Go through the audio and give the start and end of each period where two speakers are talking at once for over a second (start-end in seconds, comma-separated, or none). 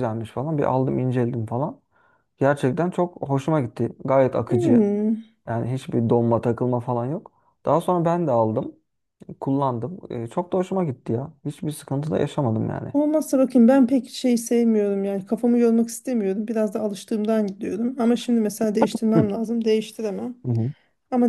none